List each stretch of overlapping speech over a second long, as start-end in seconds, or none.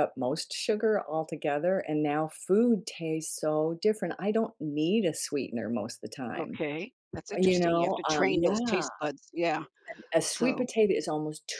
7.4-8.9